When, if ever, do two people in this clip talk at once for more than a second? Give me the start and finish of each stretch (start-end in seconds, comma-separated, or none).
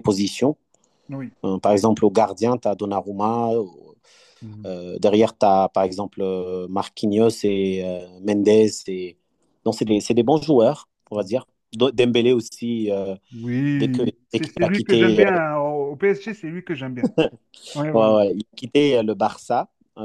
13.8-15.3